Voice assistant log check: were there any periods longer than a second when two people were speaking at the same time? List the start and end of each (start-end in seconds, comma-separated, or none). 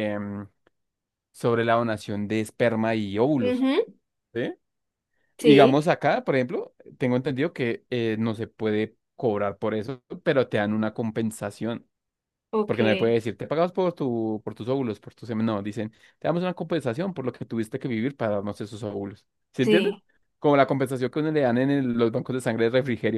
none